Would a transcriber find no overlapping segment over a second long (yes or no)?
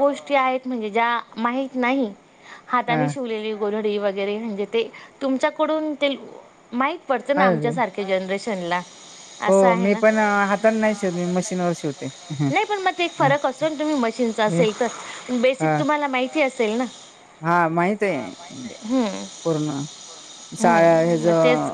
yes